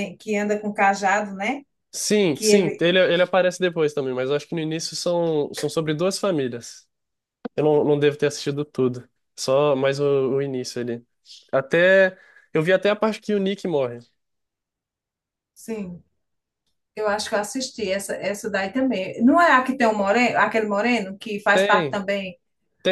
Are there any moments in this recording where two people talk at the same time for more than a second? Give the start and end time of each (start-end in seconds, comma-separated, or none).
none